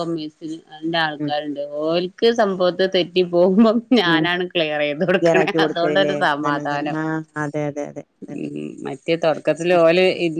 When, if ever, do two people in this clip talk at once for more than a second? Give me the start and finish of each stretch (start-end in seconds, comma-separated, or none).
5.2-7.0